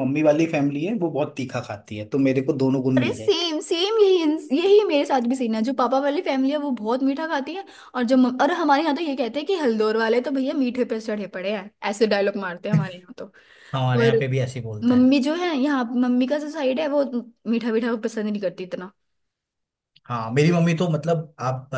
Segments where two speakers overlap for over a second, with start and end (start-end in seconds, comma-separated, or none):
none